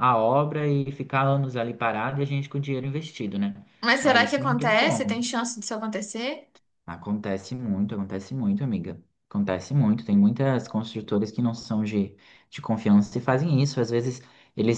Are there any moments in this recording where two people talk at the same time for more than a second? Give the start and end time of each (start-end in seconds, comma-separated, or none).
4.0-5.2